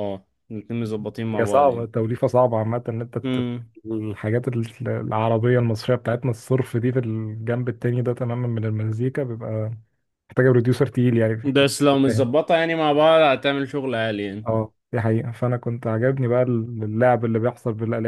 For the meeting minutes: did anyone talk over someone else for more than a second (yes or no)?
no